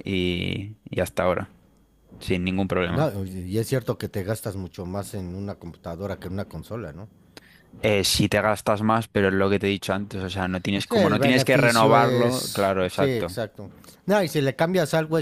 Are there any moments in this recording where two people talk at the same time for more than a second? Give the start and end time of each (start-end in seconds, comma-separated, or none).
10.8-13.4